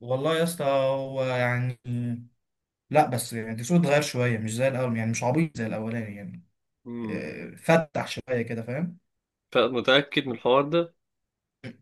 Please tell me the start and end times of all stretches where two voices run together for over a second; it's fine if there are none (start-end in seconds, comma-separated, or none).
none